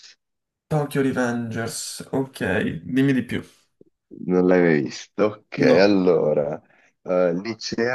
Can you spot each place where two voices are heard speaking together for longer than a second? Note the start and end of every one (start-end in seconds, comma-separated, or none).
none